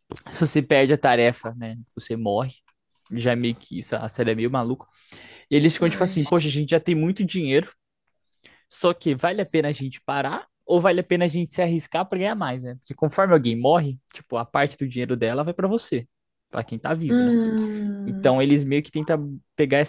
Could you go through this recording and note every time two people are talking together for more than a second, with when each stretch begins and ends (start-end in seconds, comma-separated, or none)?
none